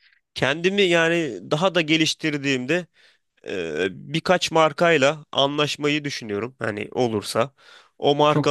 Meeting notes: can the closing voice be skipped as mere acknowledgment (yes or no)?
yes